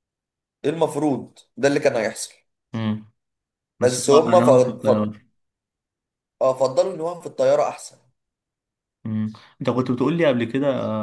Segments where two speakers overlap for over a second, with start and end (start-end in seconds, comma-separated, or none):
3.8-5.1